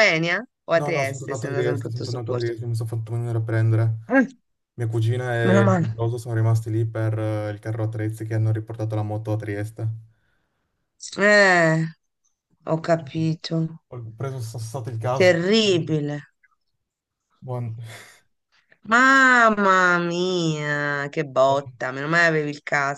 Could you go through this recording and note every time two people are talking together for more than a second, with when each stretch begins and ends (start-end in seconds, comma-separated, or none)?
0.7-2.5